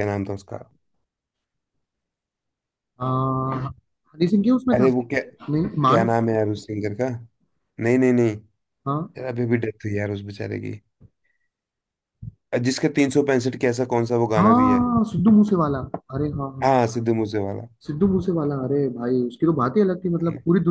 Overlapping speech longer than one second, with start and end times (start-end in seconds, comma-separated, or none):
none